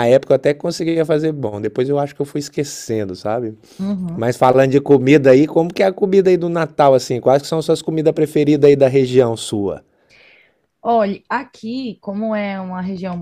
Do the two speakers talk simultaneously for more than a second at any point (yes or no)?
no